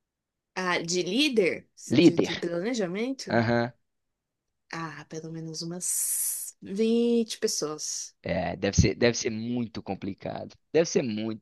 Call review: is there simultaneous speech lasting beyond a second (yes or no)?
no